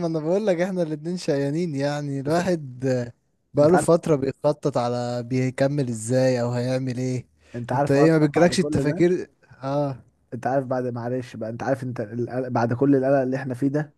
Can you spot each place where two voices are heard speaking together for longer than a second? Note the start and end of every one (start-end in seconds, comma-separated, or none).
7.7-9.1